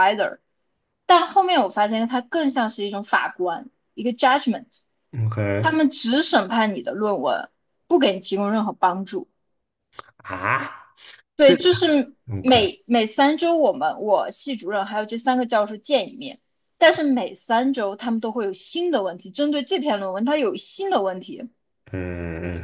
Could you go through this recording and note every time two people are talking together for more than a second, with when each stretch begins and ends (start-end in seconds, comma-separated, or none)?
none